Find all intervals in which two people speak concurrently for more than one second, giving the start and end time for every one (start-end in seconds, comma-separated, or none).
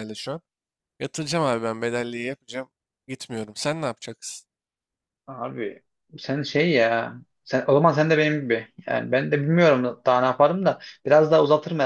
none